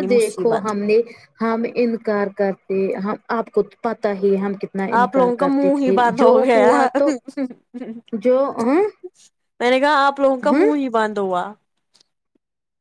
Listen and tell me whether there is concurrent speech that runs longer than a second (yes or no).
no